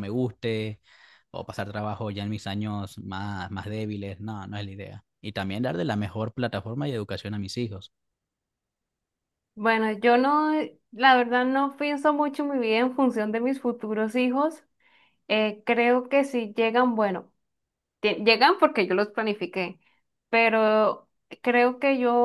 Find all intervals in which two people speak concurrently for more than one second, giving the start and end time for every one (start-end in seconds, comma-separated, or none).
none